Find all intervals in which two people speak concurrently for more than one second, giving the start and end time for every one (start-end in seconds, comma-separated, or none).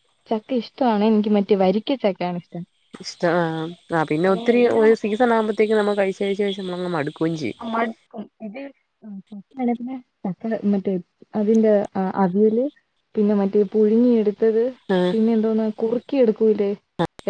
none